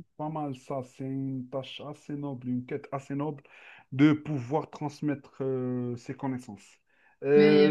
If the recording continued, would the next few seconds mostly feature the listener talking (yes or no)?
no